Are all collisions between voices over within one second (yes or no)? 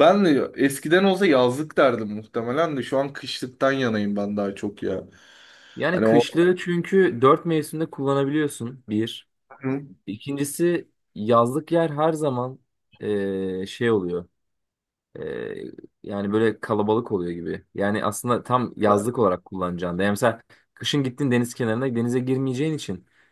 yes